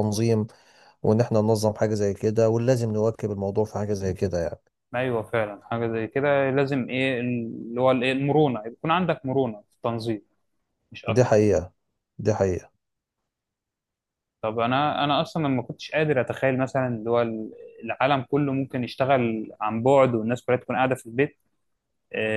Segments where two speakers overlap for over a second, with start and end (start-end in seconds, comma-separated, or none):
none